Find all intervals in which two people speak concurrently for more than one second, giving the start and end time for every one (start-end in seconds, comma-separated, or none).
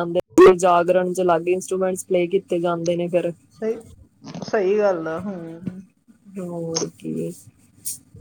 none